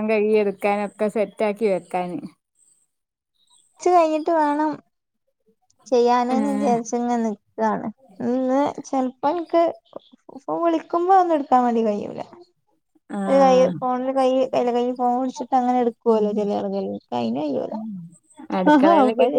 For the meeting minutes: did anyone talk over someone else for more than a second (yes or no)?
no